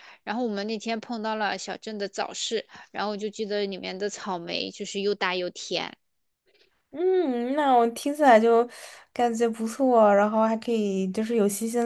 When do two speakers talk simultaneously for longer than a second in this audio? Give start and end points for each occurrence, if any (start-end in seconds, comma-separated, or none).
none